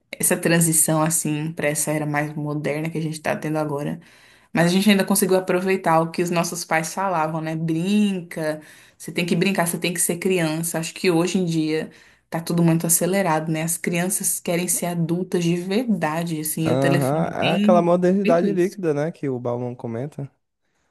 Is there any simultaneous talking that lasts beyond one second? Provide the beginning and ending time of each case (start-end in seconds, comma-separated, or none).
16.7-18.7